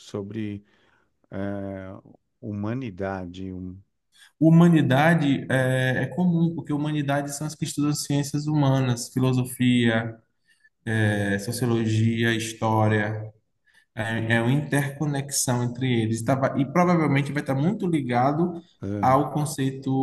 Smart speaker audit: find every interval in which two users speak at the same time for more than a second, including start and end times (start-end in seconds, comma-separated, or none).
none